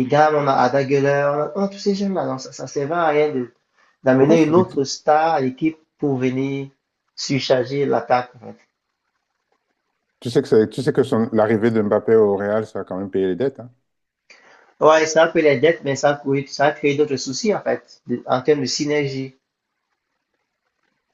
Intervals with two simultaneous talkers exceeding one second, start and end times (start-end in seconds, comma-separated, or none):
none